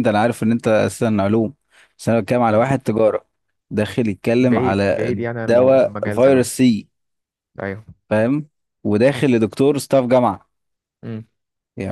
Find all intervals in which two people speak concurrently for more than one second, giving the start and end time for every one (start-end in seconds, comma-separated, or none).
4.4-6.5